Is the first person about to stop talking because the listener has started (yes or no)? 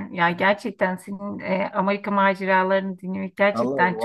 yes